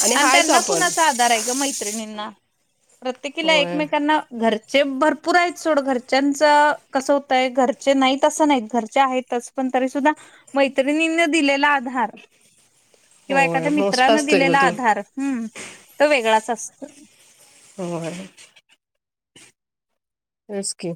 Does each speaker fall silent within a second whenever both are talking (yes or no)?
no